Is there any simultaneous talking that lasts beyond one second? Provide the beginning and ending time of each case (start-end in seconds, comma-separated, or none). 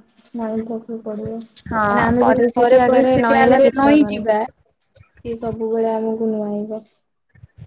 1.7-4.2